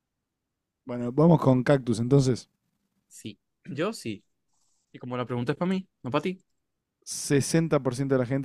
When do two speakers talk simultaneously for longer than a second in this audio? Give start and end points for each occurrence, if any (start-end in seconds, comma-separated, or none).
none